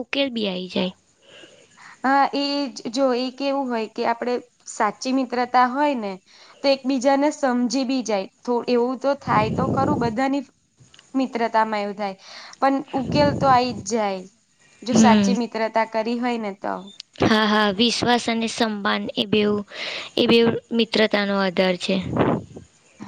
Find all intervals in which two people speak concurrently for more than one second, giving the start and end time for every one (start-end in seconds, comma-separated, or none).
none